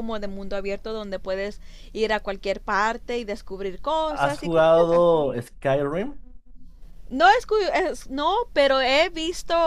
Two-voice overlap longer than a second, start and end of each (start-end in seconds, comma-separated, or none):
4.1-5.4